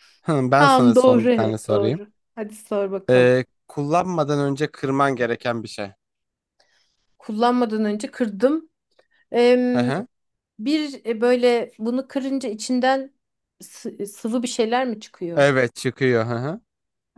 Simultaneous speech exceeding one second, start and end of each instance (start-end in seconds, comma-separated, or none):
0.6-2.0